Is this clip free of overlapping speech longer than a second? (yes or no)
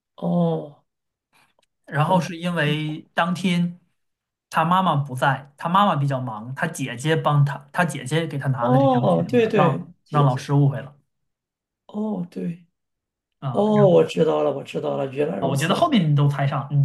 no